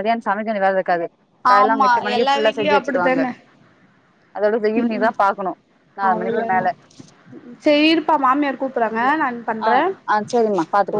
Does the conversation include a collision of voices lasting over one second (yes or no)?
yes